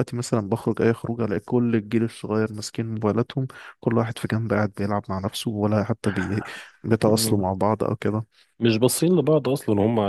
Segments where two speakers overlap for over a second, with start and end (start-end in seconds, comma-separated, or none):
none